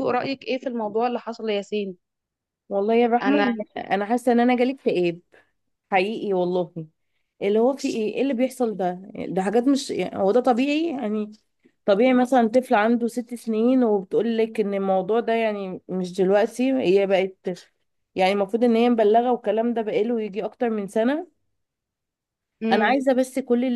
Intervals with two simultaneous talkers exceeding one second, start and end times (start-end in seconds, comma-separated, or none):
none